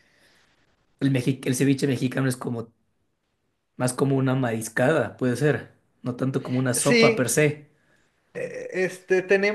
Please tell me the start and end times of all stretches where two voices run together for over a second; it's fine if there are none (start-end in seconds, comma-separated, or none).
none